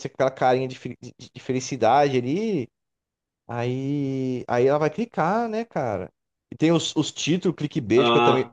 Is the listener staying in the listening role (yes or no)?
yes